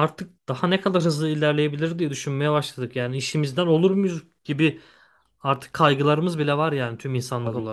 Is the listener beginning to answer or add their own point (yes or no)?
yes